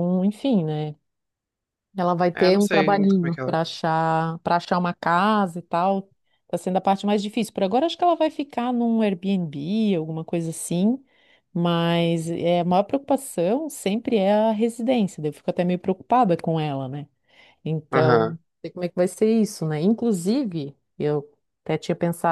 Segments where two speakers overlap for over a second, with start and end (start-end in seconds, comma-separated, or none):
2.3-3.6